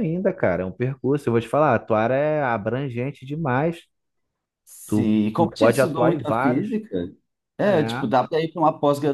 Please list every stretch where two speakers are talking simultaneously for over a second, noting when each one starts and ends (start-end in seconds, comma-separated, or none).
4.9-6.8